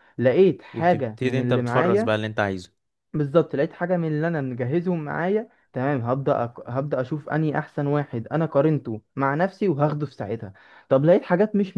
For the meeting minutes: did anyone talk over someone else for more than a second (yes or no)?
yes